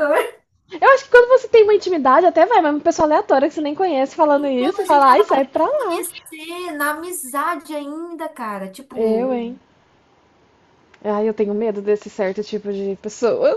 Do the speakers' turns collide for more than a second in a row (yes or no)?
yes